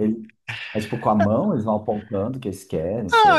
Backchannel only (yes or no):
no